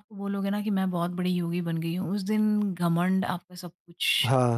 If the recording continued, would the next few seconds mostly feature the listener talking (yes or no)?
yes